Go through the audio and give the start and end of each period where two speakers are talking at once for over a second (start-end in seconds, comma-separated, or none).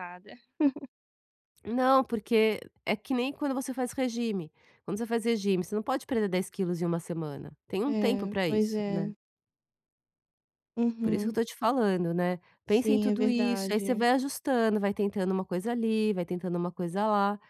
7.8-9.1, 12.7-14.1